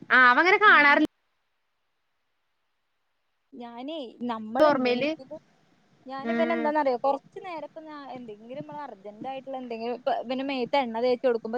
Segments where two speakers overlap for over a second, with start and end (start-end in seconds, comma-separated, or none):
none